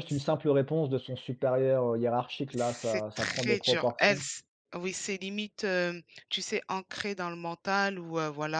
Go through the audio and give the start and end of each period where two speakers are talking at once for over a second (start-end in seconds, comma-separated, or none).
2.5-4.3